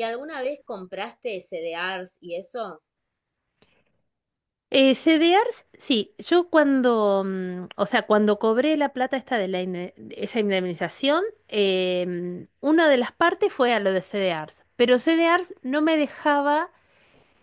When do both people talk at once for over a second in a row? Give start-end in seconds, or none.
none